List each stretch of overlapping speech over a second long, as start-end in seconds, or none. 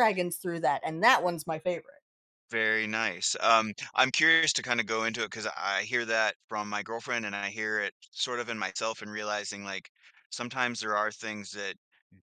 none